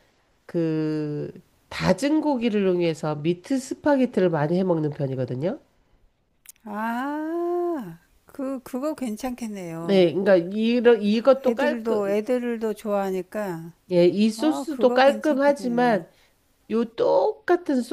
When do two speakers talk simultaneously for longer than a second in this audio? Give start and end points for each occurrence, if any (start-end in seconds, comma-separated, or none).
14.4-16.0